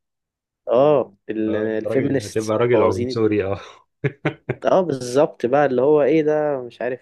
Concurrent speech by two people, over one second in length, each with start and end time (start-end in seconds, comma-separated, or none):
1.5-3.4